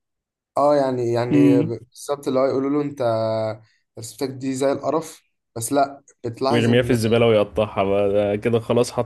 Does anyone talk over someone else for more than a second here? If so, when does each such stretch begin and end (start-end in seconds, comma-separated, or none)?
none